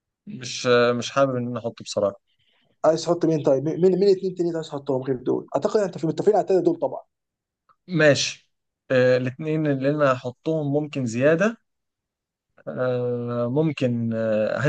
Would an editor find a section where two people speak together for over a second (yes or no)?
no